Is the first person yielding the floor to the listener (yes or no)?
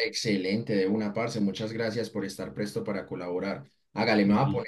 no